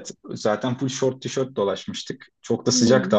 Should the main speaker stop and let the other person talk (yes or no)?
no